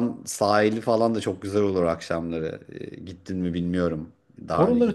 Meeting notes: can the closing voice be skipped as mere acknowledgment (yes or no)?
no